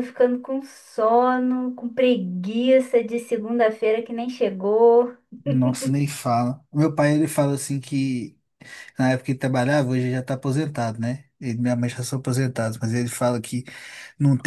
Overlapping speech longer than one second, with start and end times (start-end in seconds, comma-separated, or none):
none